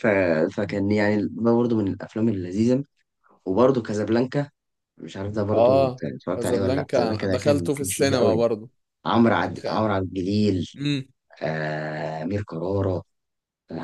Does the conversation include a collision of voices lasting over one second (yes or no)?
yes